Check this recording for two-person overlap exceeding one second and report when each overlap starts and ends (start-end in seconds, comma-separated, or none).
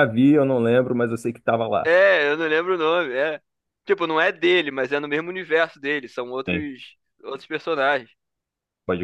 none